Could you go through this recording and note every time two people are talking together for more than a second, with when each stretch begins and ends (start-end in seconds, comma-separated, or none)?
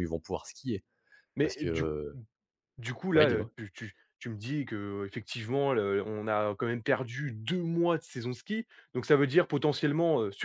none